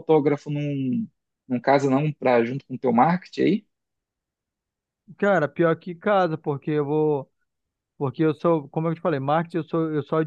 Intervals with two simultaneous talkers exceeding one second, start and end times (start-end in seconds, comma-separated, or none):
none